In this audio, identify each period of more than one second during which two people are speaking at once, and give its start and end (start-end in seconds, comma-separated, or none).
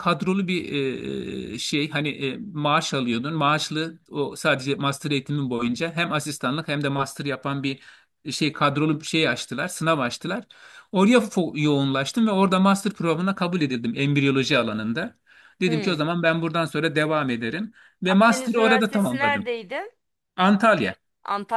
18.1-19.5